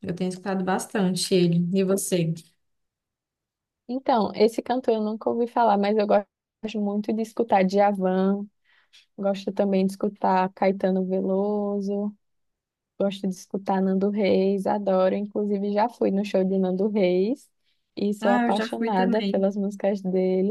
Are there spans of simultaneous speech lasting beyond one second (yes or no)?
yes